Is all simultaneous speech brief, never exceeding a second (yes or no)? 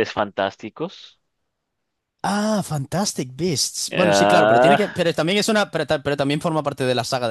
no